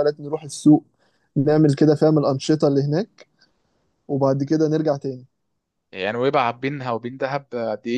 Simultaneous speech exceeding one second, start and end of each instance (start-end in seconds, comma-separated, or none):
none